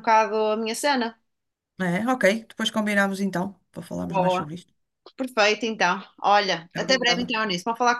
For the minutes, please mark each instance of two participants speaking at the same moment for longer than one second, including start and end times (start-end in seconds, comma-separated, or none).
none